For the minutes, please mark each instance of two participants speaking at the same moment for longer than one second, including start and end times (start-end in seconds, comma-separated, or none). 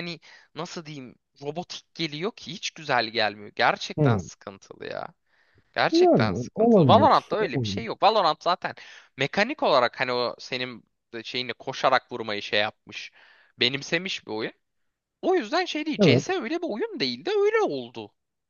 5.9-7.9